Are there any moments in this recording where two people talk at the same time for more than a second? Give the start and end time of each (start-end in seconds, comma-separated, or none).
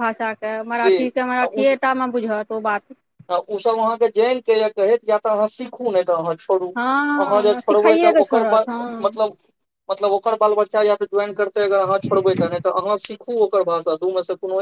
7.2-9.2